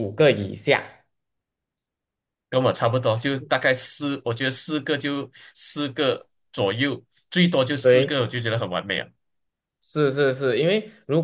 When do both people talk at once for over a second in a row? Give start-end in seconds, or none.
none